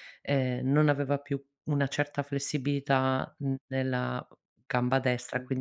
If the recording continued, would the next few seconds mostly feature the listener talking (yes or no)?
yes